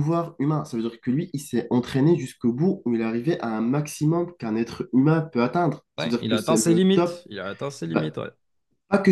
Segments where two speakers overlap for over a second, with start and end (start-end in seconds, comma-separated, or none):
6.0-7.2